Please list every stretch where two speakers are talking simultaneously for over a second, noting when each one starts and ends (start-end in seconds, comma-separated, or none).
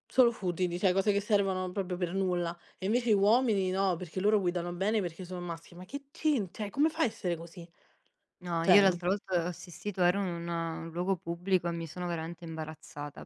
none